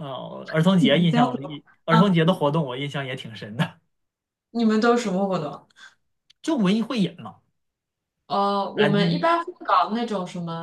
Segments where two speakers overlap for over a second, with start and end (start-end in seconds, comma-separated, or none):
0.8-2.4